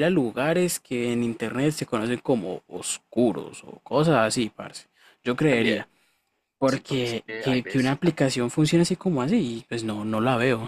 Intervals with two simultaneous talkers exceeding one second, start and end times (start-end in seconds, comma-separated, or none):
6.6-8.0